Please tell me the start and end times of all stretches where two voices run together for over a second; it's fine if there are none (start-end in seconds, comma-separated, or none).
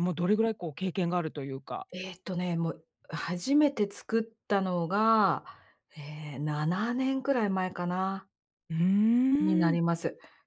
none